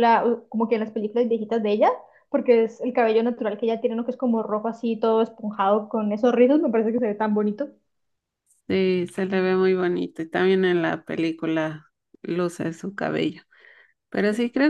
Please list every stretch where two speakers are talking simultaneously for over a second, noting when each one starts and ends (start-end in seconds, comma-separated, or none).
none